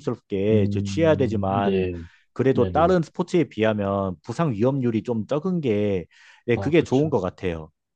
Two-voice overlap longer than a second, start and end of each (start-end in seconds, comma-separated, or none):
0.5-1.9